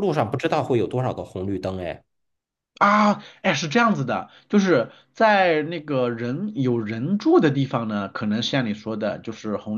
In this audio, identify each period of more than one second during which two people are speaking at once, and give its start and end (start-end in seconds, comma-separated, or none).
none